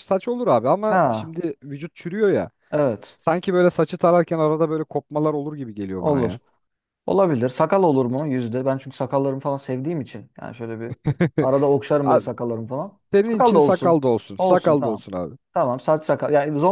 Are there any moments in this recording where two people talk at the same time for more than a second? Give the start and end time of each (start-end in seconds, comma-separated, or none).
13.1-15.0